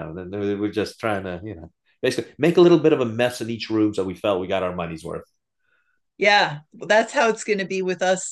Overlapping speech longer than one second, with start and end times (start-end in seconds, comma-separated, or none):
none